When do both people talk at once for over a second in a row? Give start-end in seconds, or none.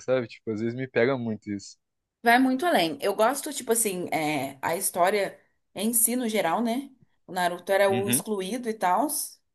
none